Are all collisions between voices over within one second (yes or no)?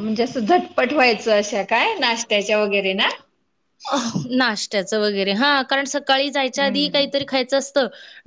yes